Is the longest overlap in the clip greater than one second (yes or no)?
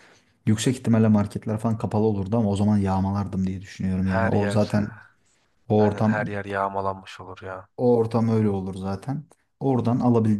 no